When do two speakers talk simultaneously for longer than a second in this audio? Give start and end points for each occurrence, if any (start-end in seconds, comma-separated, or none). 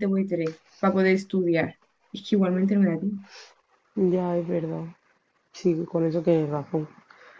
none